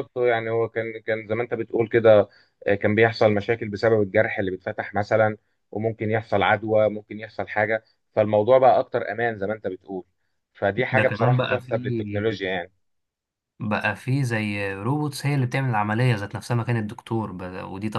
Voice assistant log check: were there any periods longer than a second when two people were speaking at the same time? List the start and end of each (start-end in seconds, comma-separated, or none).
10.8-12.6